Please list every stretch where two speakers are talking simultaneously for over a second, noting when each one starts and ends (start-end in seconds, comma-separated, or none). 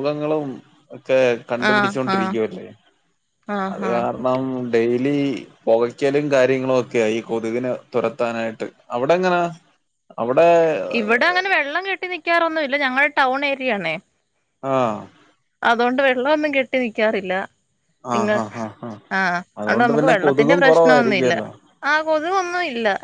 19.6-21.3